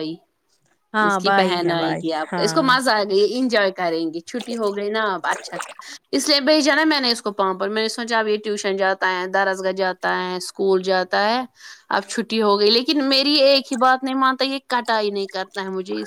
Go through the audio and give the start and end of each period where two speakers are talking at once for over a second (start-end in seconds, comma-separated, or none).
1.1-2.7